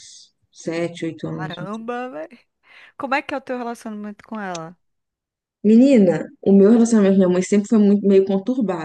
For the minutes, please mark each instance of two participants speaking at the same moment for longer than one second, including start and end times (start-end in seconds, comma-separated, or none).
none